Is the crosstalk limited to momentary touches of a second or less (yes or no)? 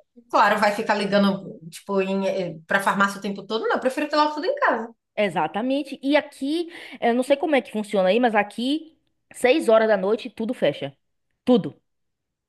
yes